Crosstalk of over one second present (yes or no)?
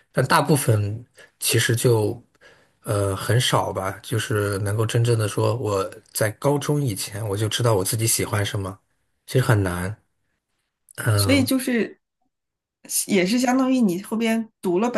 no